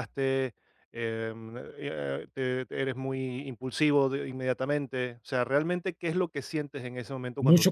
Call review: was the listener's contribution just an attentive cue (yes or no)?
no